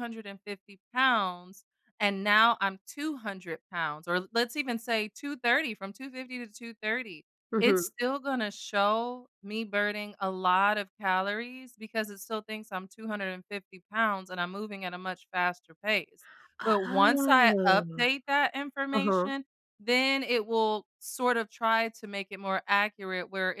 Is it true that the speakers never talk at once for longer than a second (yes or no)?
no